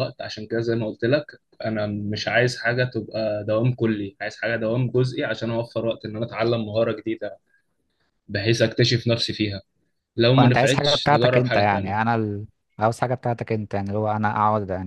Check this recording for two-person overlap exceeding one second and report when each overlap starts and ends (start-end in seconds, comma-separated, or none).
10.4-12.0